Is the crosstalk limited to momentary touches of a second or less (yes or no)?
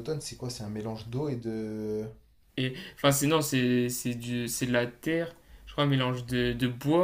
yes